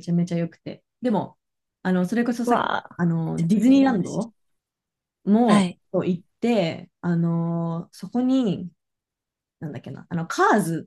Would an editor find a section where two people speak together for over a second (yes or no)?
yes